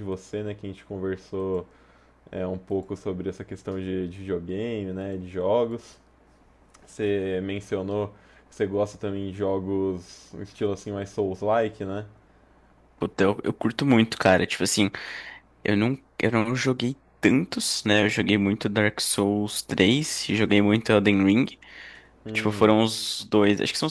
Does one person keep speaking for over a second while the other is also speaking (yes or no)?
no